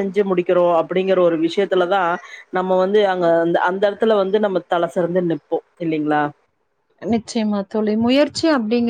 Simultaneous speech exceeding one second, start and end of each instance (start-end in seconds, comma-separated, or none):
none